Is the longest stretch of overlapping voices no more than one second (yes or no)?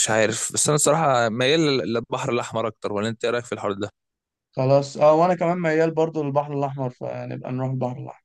yes